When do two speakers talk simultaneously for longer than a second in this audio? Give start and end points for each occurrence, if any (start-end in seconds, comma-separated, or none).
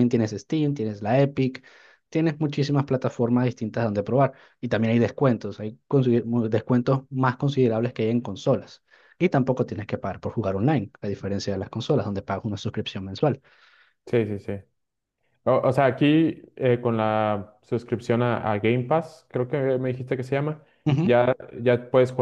none